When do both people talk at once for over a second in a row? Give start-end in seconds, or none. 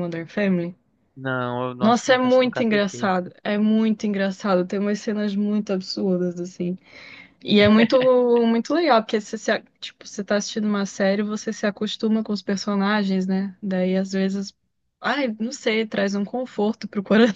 1.8-3.1